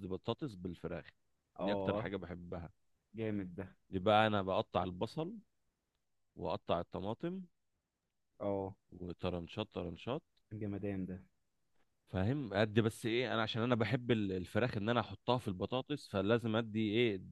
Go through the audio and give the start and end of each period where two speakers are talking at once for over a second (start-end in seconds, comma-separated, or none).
none